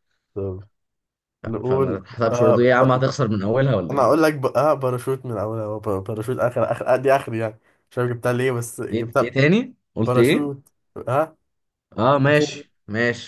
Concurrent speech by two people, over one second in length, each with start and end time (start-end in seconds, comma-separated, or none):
1.4-3.0